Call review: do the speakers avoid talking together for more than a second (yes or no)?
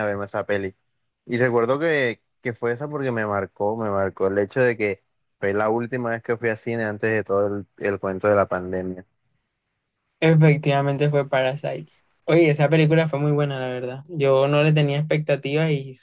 yes